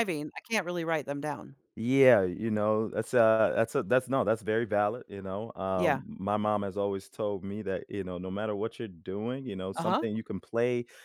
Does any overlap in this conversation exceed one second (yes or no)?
no